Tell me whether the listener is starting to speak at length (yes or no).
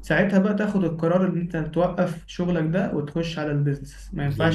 yes